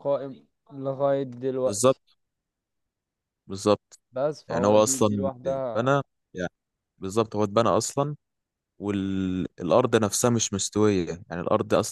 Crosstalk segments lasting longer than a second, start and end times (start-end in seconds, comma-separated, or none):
4.5-5.9